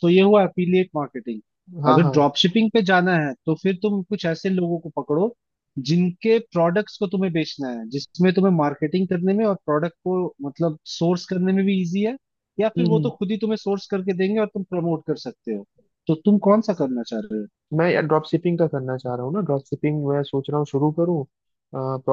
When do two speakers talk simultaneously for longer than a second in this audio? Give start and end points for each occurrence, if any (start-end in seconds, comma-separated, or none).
none